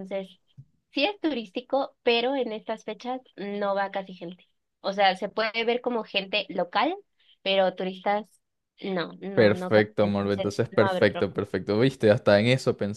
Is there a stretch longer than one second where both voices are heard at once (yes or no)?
yes